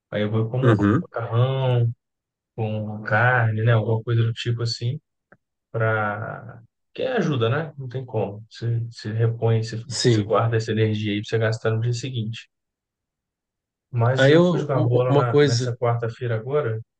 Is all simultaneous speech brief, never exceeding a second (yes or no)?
no